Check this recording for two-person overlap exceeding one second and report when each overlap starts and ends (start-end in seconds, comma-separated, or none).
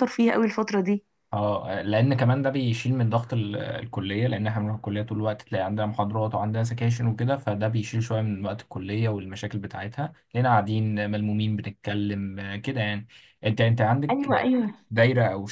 none